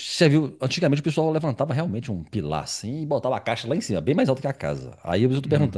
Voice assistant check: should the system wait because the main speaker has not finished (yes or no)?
yes